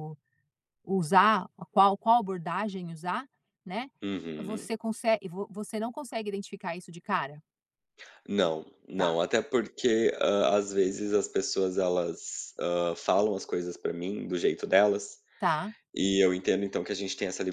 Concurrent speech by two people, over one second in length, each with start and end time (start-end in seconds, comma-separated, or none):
none